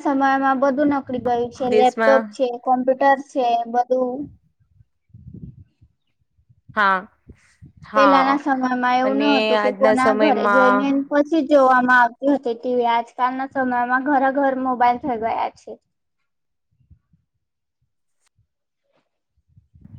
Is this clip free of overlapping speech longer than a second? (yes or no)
no